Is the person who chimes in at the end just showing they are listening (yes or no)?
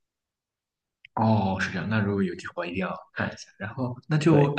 yes